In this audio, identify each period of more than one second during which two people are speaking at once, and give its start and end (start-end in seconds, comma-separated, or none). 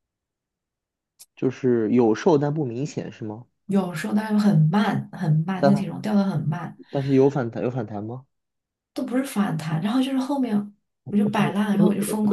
none